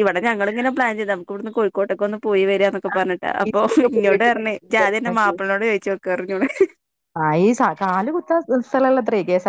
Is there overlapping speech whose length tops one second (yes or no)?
yes